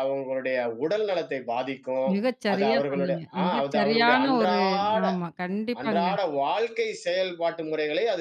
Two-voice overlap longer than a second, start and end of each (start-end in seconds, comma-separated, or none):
2.5-4.6